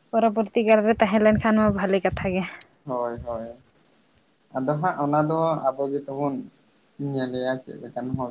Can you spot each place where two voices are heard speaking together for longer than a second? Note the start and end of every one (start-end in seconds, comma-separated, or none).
none